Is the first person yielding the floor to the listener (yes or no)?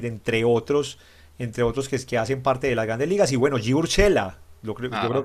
no